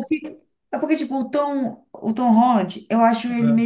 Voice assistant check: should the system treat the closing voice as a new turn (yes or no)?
no